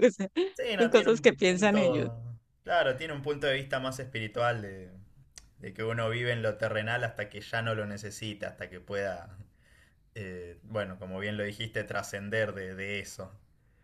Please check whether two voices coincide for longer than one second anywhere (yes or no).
yes